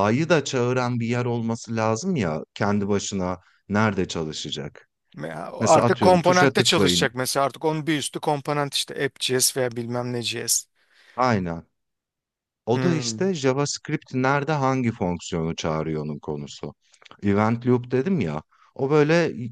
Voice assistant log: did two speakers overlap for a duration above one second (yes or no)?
yes